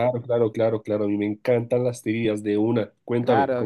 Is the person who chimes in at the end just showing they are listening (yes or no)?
no